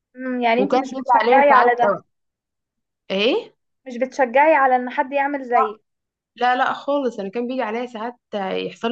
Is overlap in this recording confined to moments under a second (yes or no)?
no